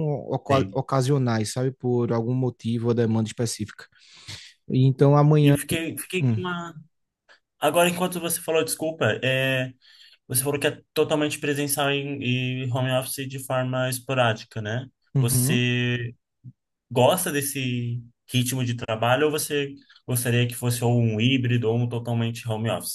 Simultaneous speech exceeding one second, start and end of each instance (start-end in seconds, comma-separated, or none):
none